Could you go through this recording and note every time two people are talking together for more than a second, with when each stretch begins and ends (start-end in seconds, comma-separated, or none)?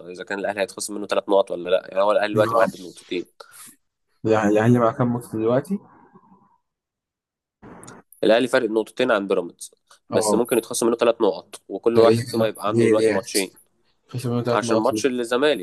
11.9-13.2